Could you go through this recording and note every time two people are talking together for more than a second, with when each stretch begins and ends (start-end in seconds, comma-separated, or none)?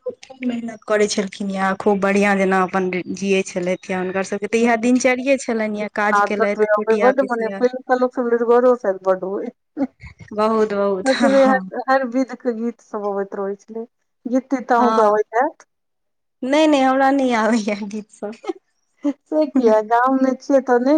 none